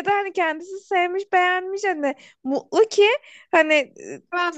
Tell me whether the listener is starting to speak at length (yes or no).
no